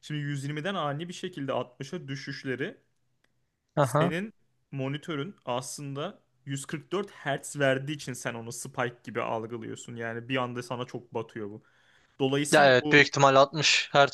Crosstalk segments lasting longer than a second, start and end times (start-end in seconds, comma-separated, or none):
none